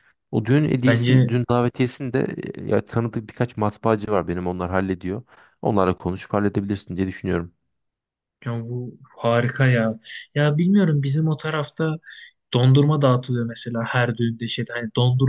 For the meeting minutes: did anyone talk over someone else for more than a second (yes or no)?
no